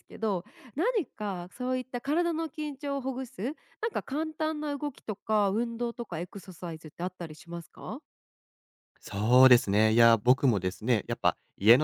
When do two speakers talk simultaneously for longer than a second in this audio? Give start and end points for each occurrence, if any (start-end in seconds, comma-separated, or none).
none